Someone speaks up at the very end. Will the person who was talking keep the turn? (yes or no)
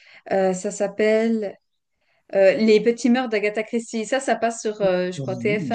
no